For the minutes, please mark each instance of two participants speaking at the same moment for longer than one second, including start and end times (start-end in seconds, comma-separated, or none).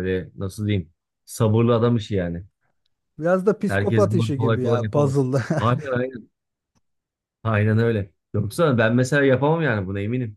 3.7-5.4